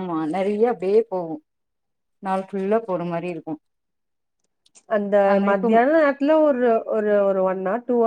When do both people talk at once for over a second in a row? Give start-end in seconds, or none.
none